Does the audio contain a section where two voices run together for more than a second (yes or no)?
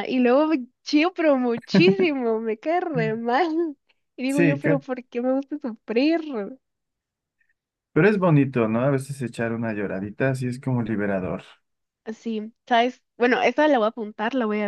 no